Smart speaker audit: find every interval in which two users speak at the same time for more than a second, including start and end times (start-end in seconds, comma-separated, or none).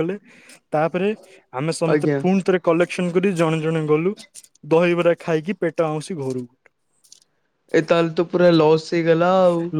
none